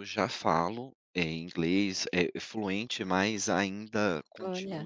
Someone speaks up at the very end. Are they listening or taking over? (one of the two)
listening